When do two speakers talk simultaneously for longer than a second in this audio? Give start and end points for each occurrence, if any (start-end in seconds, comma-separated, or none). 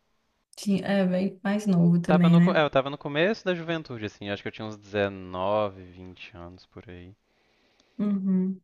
none